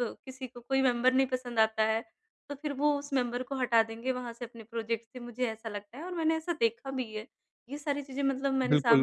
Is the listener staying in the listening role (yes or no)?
no